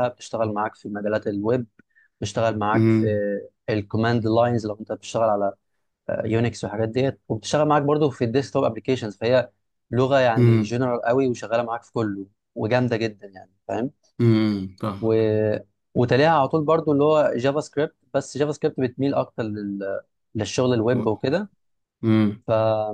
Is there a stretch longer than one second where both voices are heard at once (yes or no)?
no